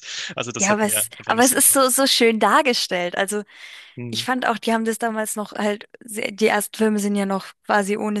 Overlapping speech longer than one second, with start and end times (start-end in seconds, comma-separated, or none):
0.6-1.9